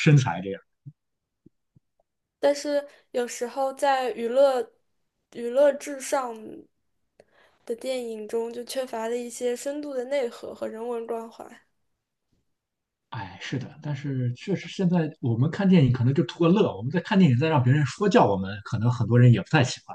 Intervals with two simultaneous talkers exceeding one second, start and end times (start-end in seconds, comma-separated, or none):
none